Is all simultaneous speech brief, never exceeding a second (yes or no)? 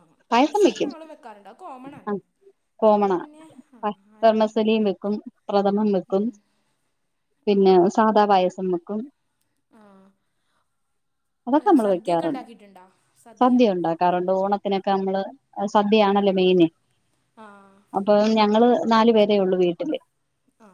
yes